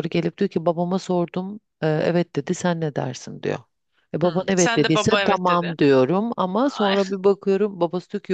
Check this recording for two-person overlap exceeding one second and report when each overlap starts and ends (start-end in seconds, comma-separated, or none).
4.2-5.7